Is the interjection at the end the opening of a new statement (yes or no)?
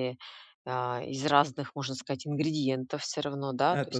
no